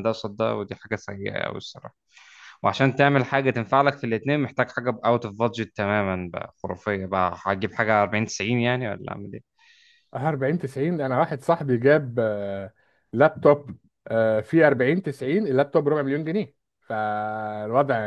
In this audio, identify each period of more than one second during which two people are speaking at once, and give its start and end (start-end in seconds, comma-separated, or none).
none